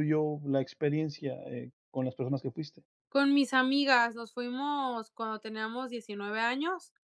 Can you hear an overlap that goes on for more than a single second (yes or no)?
no